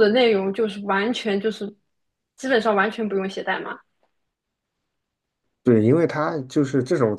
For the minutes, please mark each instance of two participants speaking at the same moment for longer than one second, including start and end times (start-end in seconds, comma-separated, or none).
none